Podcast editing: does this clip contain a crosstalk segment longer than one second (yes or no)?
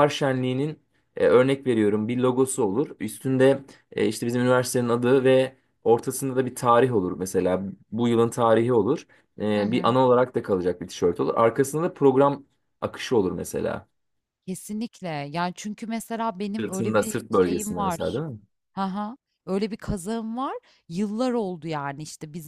yes